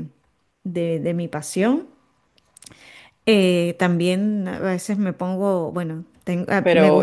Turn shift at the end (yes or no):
yes